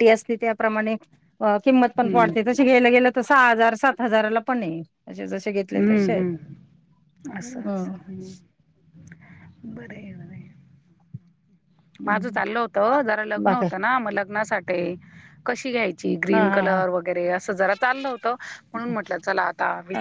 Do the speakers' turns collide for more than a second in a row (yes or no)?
no